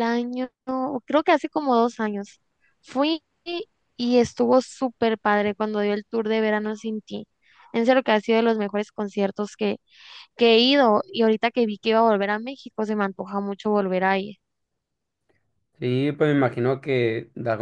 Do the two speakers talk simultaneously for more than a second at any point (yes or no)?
no